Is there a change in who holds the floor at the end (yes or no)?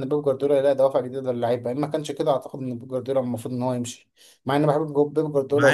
yes